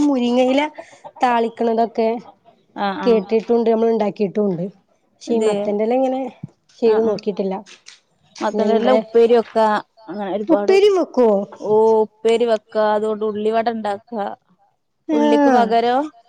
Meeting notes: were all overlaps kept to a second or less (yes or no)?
yes